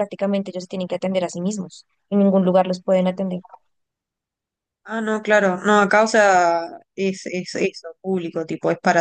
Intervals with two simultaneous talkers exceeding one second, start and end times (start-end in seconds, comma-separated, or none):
none